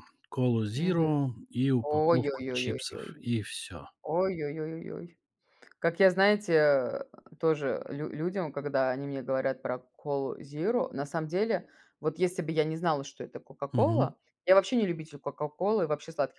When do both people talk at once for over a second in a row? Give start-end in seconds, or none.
1.8-3.2